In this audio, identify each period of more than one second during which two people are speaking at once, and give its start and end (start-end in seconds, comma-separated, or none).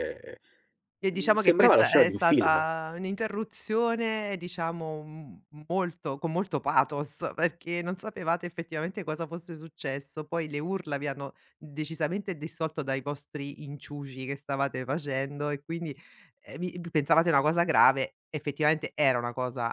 1.1-2.6